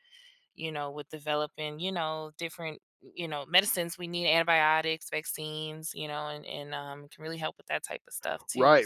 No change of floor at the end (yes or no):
no